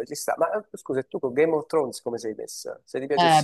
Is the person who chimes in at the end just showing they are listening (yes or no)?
no